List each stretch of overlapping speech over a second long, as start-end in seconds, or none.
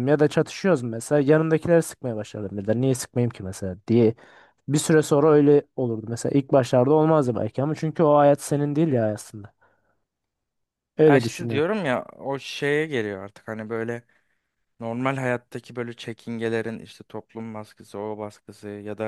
none